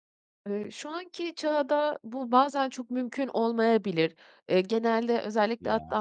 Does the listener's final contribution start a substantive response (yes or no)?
no